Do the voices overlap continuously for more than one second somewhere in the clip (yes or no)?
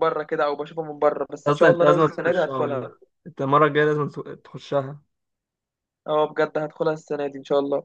yes